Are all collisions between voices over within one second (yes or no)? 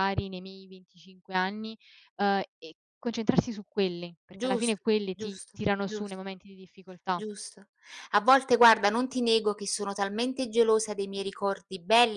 no